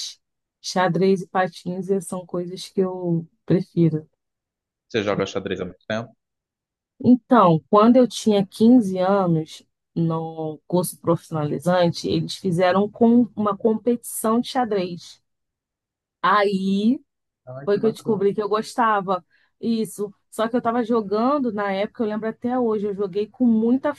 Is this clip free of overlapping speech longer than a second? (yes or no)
yes